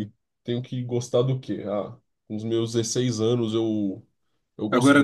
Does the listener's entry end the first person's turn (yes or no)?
no